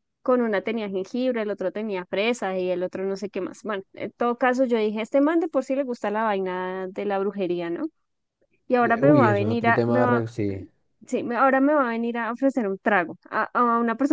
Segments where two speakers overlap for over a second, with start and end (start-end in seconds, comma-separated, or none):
8.8-10.2